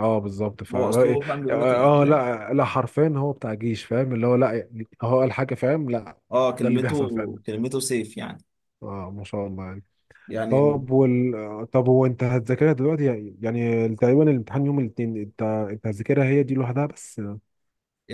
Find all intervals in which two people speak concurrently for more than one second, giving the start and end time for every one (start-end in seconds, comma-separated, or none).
0.7-2.2